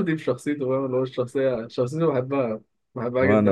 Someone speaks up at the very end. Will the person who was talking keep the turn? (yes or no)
yes